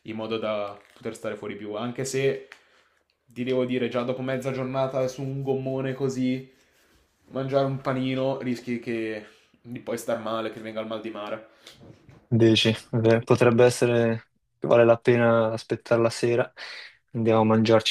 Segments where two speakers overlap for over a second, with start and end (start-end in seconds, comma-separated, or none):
none